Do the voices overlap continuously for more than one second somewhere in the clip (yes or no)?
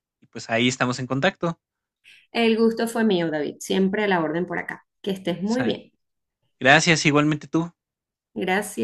no